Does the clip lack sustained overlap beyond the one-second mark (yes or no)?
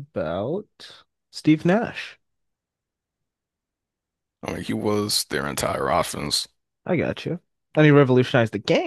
yes